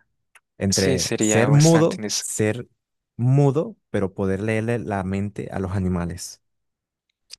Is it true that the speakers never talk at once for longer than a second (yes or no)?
no